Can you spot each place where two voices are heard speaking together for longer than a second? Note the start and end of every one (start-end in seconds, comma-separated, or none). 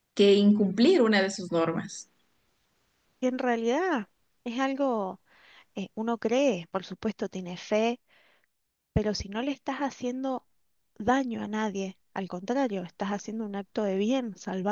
none